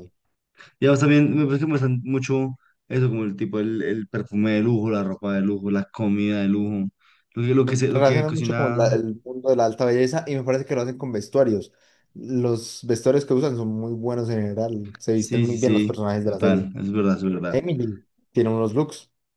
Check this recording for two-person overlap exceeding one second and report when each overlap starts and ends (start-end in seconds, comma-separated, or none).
7.6-9.0, 15.1-16.7